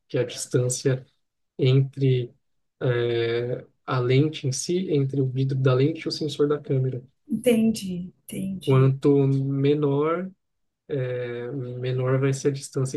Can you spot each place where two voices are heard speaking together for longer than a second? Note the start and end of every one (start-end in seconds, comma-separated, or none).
none